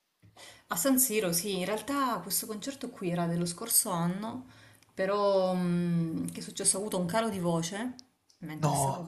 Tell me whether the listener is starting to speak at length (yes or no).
no